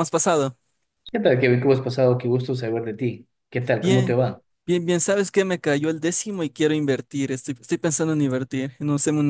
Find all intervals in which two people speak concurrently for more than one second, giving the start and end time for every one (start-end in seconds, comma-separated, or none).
none